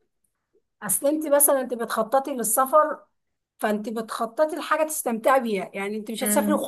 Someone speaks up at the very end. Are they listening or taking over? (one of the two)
listening